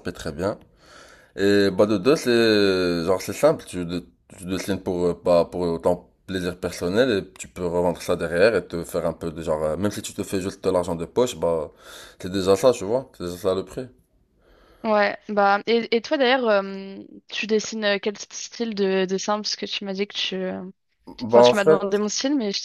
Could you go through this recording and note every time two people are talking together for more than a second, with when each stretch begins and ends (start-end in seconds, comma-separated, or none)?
none